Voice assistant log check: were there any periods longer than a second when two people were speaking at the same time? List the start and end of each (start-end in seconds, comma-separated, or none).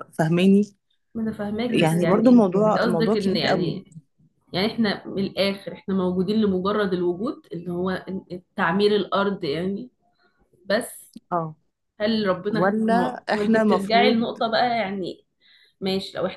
1.7-3.8, 12.5-14.4